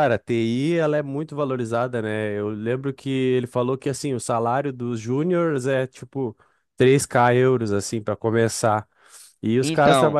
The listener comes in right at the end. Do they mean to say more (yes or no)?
no